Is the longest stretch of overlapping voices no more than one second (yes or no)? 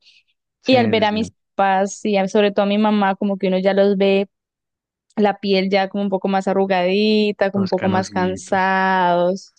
no